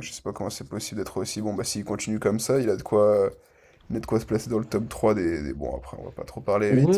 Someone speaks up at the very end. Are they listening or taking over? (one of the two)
taking over